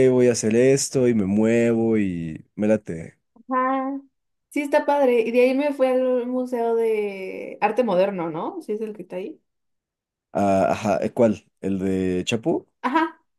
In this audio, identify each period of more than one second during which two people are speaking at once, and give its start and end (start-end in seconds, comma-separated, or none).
none